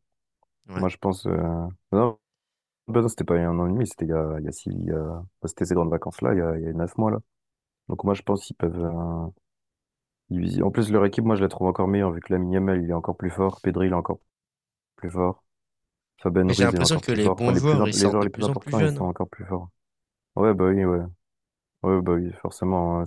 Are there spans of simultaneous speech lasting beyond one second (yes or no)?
yes